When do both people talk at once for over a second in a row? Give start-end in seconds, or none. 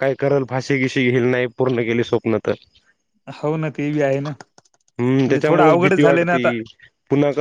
5.0-6.5